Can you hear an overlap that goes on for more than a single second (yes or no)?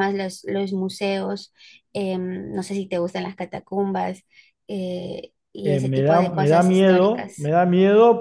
yes